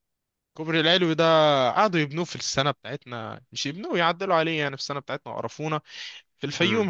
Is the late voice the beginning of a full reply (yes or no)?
no